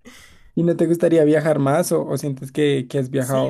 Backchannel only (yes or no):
no